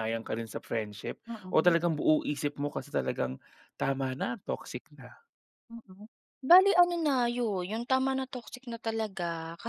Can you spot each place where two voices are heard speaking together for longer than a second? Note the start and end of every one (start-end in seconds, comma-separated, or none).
none